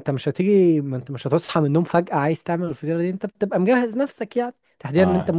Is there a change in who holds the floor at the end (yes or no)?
no